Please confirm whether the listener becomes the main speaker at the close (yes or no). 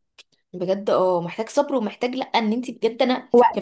no